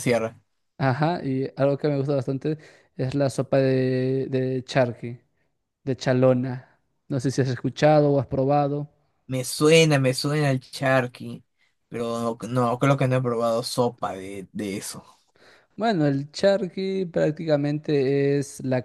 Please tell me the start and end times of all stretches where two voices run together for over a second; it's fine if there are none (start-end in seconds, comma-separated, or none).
none